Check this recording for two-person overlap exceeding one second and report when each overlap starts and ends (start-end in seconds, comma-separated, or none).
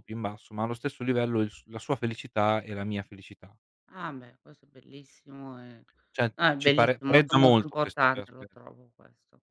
6.3-8.4